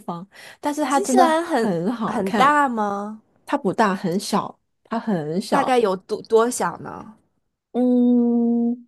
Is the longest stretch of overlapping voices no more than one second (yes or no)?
no